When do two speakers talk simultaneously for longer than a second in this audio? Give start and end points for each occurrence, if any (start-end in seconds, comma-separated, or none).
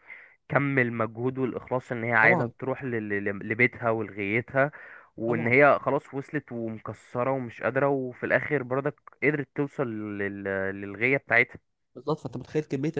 none